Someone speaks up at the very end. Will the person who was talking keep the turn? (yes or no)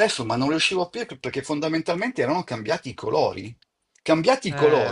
yes